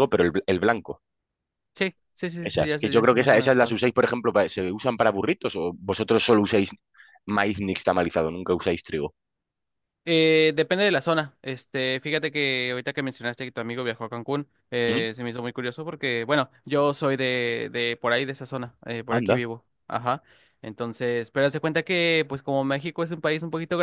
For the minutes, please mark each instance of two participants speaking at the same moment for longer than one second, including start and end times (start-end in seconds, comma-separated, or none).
2.4-3.8